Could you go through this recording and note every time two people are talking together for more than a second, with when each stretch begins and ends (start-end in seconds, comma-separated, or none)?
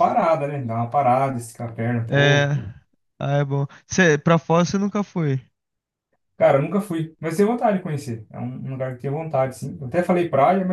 none